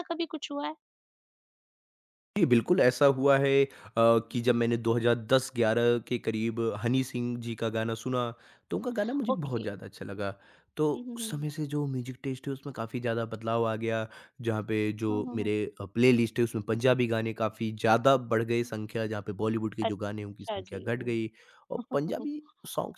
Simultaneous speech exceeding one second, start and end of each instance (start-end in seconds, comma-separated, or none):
19.9-21.3